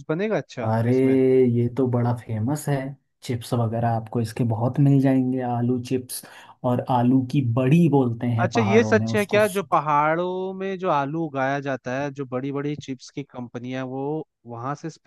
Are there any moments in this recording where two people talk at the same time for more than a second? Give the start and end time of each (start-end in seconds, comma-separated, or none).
8.4-9.9